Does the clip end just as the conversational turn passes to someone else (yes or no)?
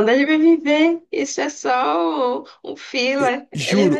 yes